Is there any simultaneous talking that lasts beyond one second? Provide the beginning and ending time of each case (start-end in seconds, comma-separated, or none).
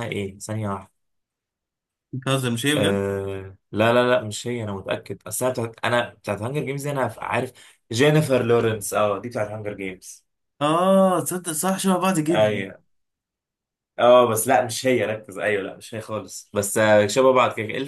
none